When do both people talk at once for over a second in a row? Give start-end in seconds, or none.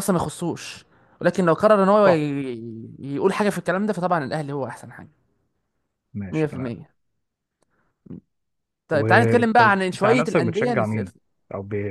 8.9-11.1